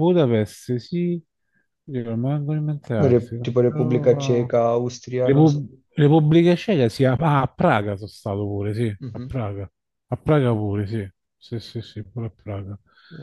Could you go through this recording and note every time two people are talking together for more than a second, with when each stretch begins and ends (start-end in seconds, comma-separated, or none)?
3.0-4.5